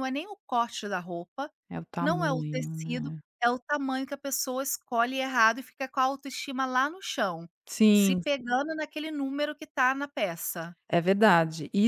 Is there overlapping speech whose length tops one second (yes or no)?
yes